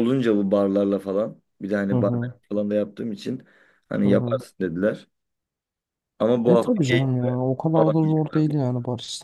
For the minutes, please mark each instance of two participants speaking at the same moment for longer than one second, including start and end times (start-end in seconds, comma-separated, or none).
6.5-8.5